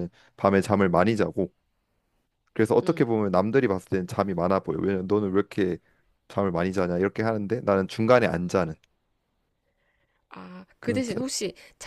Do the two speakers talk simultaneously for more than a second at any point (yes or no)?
no